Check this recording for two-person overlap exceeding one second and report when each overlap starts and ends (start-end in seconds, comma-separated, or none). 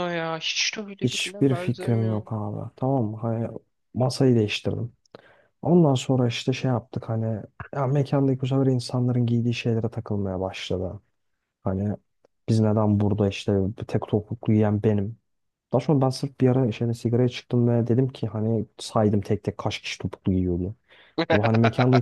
1.0-2.3